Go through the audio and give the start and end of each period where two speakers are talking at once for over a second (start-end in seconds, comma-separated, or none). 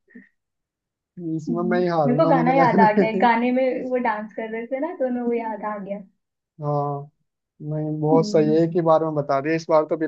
1.5-3.2